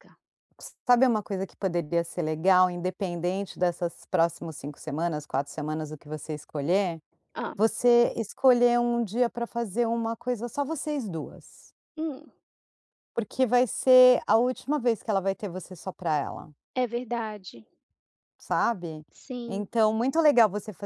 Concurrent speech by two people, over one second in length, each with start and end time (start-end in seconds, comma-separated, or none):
none